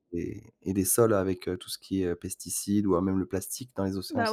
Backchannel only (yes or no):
no